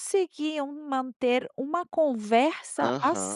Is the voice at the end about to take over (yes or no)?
yes